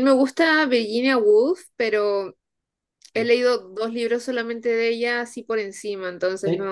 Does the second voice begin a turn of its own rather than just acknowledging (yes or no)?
yes